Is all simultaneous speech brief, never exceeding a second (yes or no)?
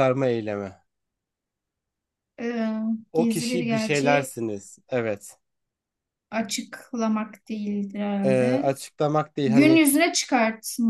no